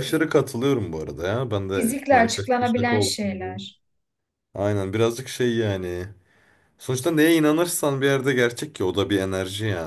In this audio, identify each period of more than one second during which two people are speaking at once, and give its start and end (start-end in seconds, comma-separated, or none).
1.7-3.5